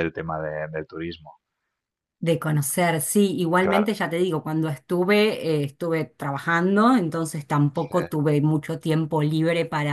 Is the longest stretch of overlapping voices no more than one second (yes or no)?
yes